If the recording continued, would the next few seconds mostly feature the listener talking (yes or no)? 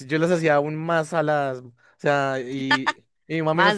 no